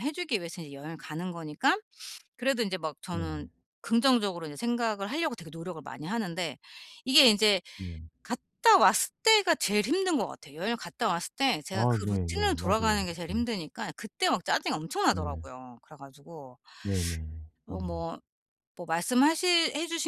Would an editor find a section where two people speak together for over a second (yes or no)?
yes